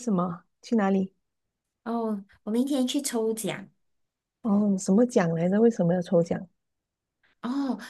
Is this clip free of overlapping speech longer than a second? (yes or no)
yes